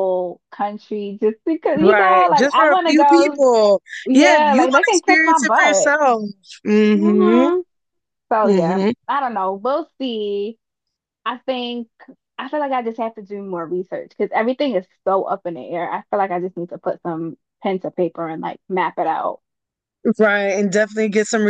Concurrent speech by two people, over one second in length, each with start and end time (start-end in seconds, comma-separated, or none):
1.8-3.4, 4.0-5.9